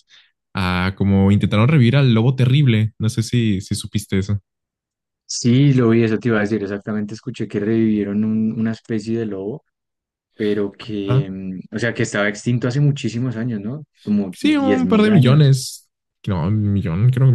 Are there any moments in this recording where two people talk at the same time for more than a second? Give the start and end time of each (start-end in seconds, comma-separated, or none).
14.3-15.5